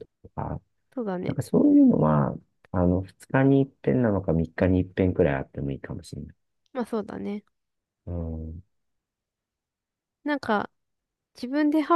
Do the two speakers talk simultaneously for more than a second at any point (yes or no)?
no